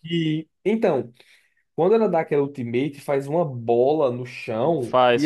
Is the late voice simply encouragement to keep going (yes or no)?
yes